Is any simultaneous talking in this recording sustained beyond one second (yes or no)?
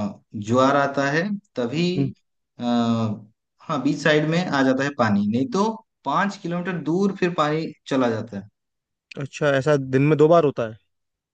no